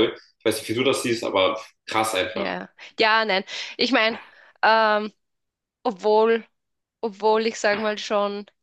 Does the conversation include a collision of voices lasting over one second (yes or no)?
no